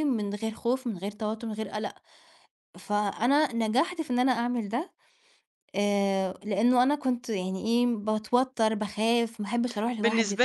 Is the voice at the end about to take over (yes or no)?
yes